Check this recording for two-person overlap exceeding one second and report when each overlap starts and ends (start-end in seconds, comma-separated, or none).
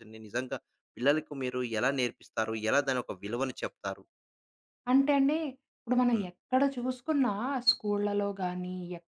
none